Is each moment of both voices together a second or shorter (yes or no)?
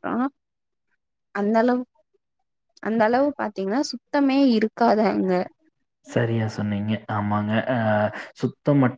yes